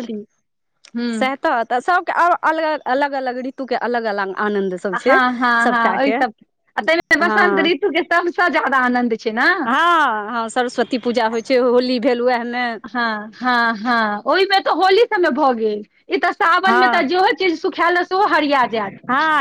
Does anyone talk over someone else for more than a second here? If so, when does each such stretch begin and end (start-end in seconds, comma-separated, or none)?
none